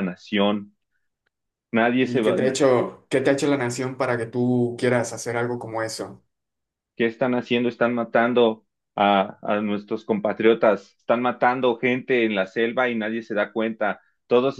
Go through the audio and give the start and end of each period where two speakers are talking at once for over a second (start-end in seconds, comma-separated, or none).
none